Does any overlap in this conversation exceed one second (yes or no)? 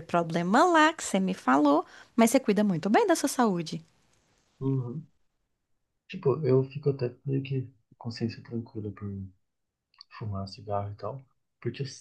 no